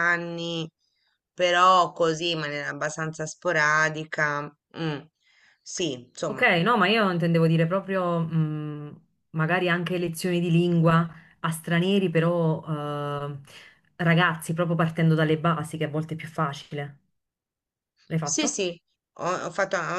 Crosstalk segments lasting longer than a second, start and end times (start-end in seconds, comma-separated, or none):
none